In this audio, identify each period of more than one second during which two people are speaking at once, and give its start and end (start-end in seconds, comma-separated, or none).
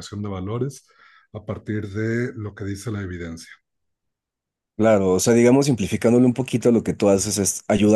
none